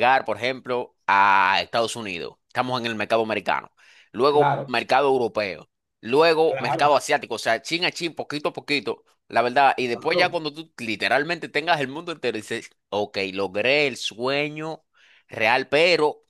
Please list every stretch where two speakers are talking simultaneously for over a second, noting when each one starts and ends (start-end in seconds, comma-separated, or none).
none